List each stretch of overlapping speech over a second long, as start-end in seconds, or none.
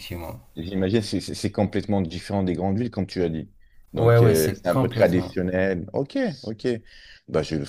4.0-5.3